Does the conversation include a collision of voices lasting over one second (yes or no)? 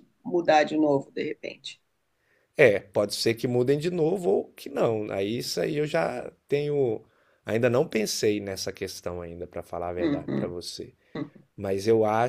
no